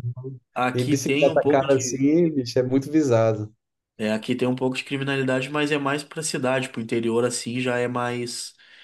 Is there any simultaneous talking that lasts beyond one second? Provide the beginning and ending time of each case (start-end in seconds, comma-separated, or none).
0.5-2.0